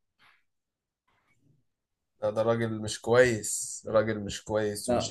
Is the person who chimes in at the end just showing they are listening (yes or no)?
no